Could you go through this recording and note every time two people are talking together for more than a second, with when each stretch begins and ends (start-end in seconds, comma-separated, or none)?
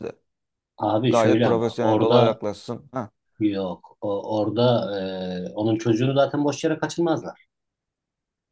1.1-2.4